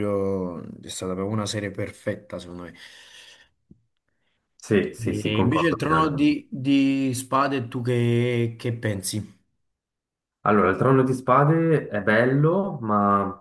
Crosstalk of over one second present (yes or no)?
yes